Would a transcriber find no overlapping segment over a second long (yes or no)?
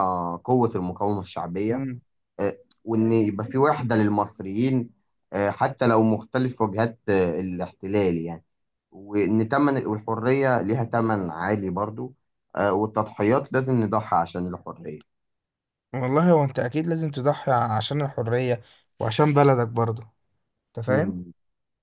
yes